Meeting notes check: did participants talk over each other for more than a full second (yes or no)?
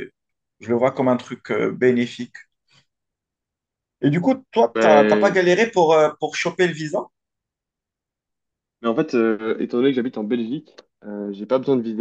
no